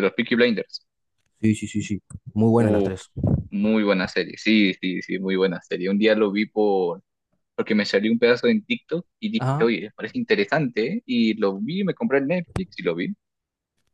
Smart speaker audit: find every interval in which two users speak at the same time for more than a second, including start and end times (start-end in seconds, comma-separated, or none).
none